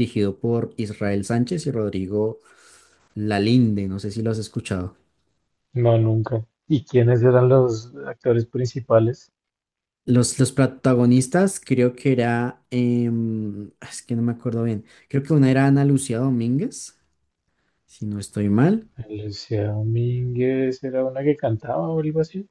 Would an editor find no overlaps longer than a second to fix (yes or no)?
yes